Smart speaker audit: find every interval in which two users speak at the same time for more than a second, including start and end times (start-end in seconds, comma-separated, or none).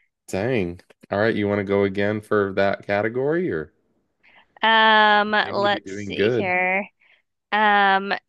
5.2-6.5